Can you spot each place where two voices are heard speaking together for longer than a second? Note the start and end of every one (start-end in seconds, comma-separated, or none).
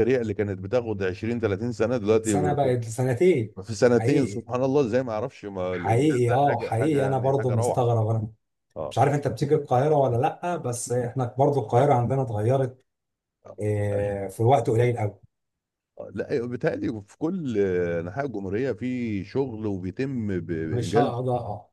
5.7-7.9